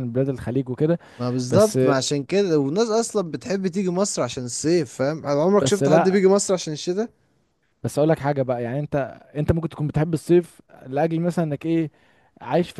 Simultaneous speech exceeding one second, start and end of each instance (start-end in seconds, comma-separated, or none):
none